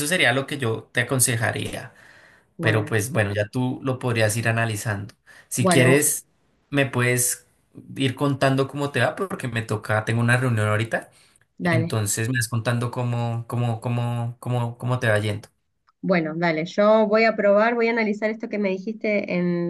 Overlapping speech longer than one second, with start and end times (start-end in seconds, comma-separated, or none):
none